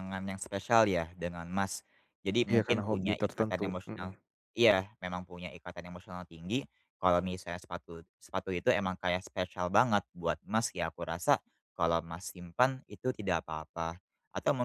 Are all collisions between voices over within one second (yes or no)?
no